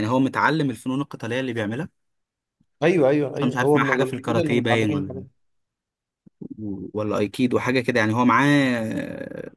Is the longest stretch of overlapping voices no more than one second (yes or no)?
no